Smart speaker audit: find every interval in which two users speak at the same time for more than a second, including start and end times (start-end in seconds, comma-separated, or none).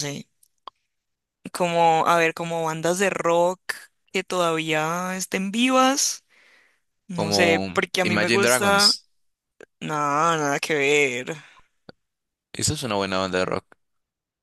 7.1-8.9